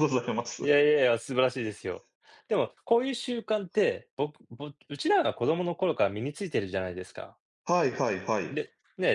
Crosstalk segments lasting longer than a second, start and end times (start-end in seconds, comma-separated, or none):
none